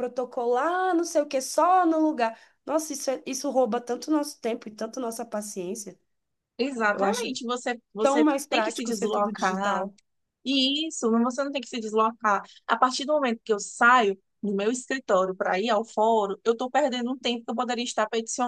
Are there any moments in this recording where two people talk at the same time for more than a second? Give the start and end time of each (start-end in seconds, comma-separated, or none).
8.0-9.8